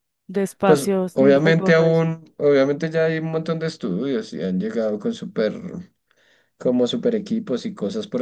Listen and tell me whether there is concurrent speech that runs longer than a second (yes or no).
yes